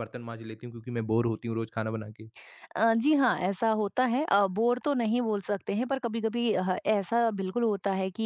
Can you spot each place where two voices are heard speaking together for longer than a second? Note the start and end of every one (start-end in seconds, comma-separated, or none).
none